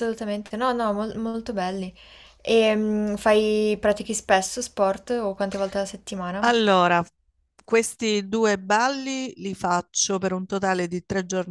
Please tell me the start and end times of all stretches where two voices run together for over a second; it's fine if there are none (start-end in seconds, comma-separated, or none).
none